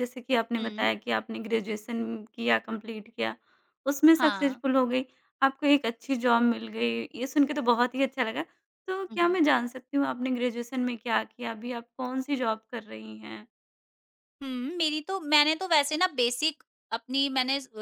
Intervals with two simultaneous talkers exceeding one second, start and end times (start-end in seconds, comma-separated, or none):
none